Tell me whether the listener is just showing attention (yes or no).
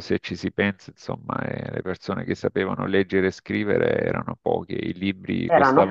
yes